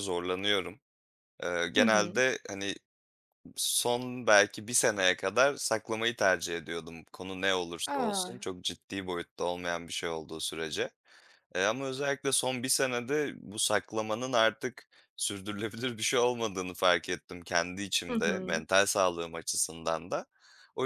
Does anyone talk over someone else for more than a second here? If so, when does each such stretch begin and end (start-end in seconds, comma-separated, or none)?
none